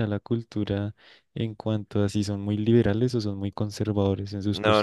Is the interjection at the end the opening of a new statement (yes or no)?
yes